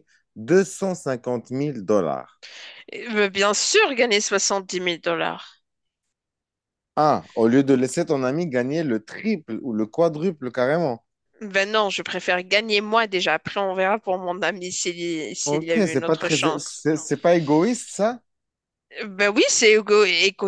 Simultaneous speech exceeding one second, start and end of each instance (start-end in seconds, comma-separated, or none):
15.4-16.9